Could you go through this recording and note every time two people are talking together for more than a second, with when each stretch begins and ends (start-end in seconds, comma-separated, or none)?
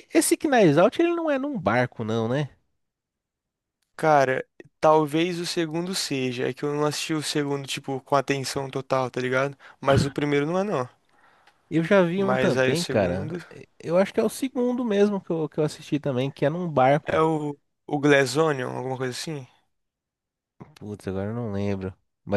12.2-13.4